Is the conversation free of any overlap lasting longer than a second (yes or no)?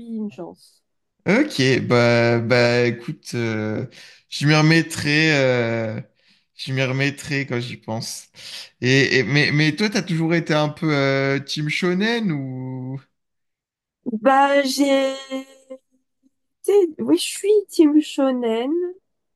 yes